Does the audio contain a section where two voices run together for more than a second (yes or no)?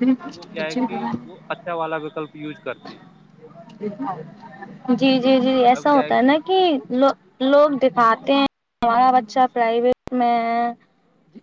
no